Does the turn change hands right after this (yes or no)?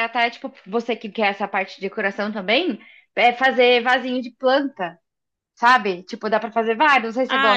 yes